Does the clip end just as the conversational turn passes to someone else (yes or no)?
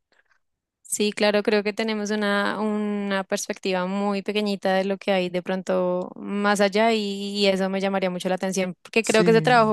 no